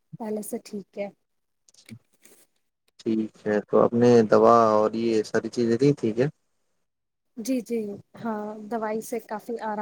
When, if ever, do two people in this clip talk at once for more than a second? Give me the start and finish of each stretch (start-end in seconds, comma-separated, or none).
none